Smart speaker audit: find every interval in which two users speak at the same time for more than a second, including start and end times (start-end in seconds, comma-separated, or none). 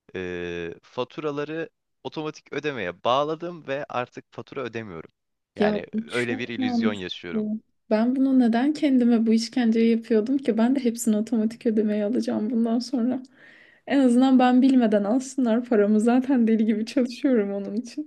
5.6-7.4